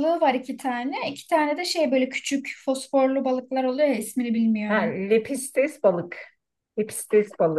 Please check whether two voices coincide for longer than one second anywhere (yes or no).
no